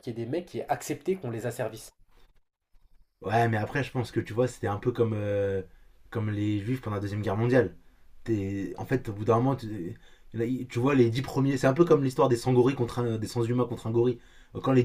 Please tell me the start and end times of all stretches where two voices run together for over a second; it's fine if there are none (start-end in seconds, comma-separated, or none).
none